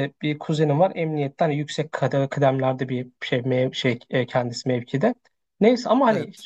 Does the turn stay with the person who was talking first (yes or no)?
yes